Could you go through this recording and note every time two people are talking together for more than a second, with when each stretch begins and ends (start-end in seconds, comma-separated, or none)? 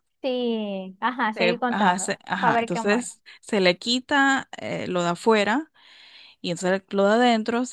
1.3-3.1